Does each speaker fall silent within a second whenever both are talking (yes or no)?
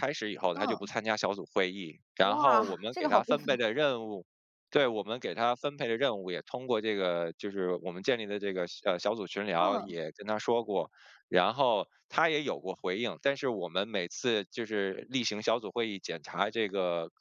no